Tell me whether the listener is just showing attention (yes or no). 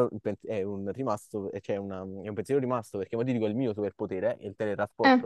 yes